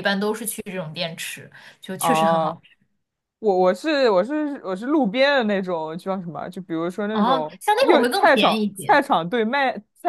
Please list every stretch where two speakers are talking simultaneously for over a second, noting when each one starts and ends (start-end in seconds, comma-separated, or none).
7.1-9.0